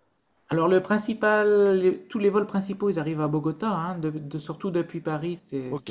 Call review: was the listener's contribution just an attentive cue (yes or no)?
yes